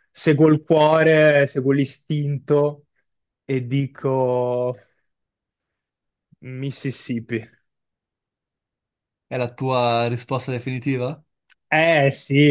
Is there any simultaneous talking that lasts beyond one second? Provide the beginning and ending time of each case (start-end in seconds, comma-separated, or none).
none